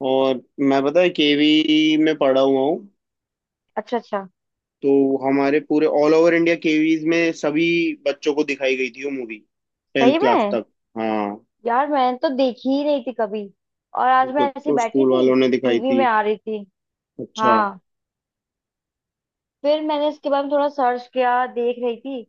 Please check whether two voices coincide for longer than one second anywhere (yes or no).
yes